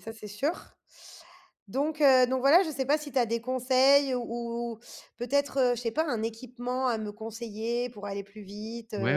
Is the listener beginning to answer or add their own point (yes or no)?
yes